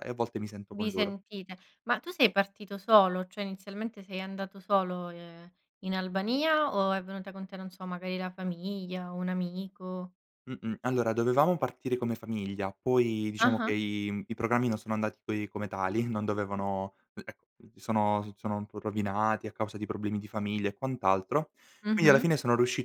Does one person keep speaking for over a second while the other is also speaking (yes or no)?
no